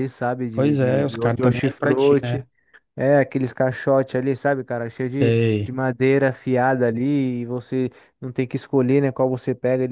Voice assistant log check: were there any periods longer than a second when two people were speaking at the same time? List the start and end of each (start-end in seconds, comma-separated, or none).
0.5-2.5